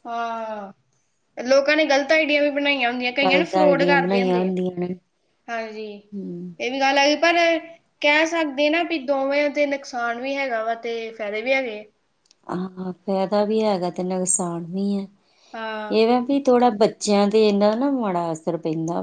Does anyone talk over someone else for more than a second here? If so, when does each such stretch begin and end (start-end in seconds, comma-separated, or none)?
3.2-4.5